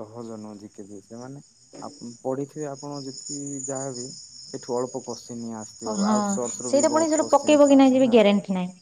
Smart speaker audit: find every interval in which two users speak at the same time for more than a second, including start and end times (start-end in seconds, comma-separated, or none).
5.9-8.2